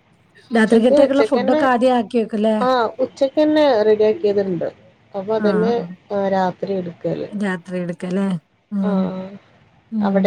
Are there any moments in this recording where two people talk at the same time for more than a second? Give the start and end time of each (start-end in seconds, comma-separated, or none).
none